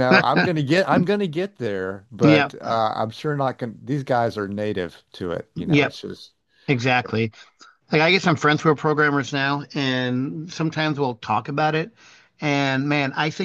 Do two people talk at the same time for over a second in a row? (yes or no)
no